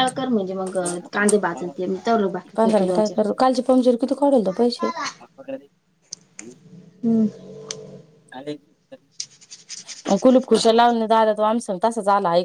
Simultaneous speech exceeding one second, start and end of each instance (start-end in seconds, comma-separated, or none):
1.5-3.2